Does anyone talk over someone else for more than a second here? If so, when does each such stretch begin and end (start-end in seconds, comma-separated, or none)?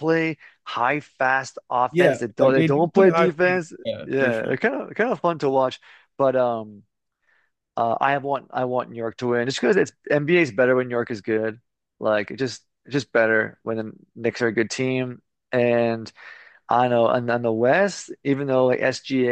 1.9-4.5